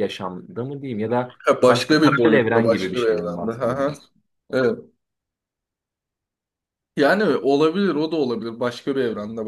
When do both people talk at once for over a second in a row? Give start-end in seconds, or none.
1.4-3.9